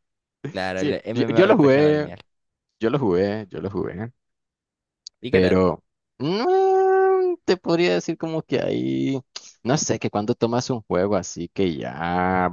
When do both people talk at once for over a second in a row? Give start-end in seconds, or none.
0.7-2.1